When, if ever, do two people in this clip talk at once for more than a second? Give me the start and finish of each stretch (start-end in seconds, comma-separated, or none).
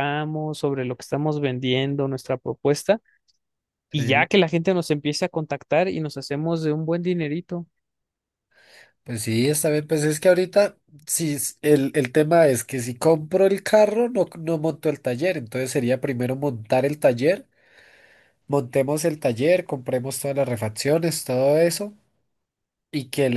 none